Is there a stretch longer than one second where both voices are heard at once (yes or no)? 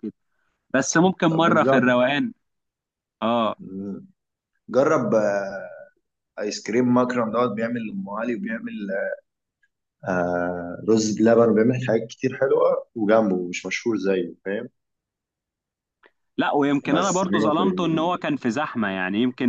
yes